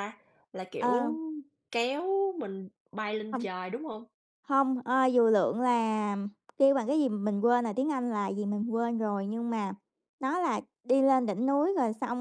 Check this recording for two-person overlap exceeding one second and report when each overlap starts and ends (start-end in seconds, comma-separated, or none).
none